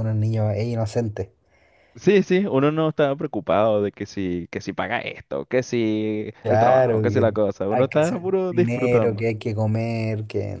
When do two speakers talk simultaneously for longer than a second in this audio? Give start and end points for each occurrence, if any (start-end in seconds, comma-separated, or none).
6.4-9.3